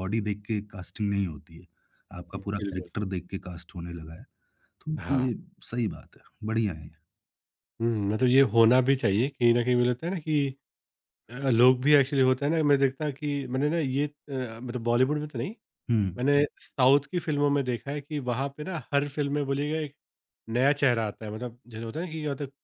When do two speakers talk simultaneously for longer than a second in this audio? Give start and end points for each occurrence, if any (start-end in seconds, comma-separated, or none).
none